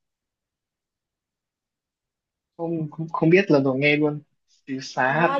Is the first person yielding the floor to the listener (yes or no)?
yes